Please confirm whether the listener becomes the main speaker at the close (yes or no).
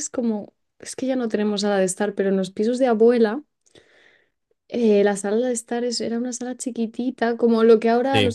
no